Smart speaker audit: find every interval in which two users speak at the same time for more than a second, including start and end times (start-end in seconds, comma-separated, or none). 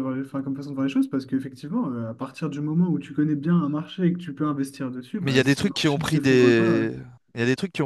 5.2-6.9